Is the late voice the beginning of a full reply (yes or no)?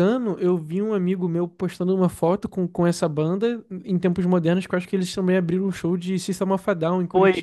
yes